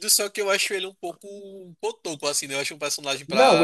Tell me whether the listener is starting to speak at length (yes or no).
yes